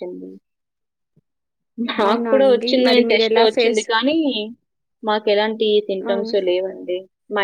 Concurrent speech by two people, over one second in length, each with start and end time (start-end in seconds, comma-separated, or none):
2.1-3.8